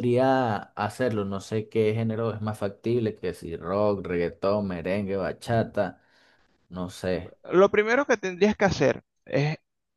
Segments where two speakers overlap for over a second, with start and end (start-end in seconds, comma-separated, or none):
none